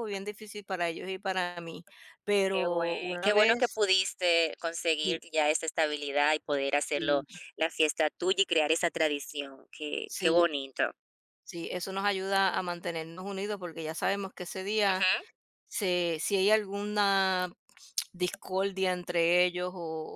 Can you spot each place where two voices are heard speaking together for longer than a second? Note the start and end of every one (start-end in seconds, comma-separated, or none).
2.5-3.8